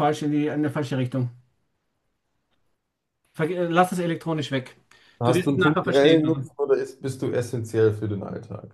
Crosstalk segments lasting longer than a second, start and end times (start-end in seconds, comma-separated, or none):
5.2-6.5